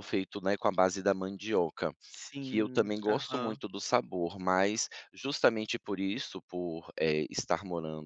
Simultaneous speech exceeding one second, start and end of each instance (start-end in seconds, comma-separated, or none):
2.4-3.6